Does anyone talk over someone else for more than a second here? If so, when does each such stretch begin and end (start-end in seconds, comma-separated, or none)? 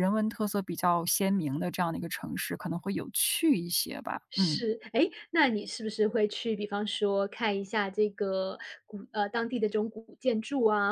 none